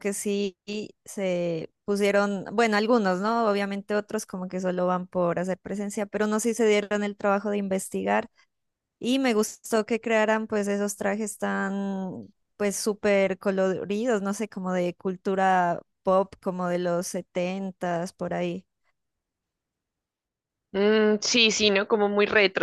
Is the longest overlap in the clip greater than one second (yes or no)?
no